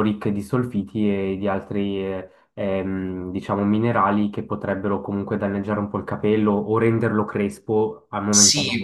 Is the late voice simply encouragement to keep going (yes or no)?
no